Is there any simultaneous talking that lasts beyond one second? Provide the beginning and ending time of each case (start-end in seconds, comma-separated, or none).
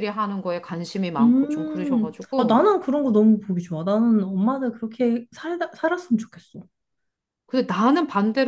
1.2-2.6